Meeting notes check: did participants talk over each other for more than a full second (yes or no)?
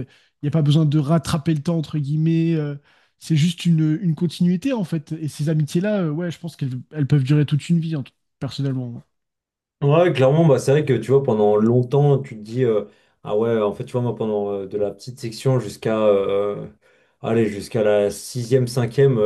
no